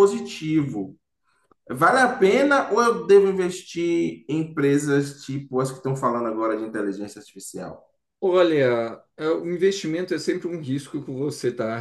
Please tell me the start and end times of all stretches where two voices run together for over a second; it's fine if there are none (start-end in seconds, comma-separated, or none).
none